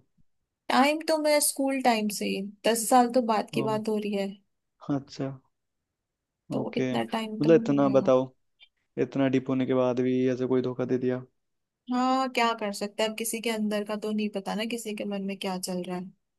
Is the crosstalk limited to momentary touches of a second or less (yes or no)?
no